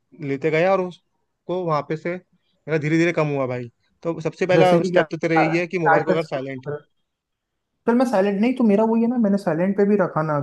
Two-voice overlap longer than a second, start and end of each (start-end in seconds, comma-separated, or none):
none